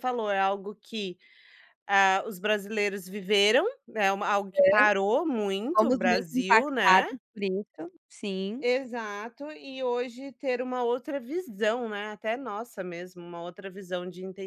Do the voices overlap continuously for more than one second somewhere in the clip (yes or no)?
yes